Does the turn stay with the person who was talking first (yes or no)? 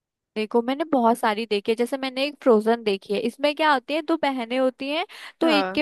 yes